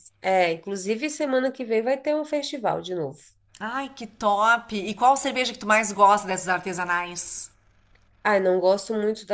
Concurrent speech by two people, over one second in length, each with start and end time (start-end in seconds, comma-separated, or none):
none